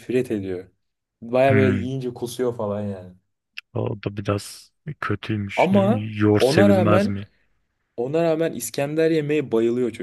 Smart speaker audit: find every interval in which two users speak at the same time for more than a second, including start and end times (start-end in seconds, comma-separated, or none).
5.6-7.2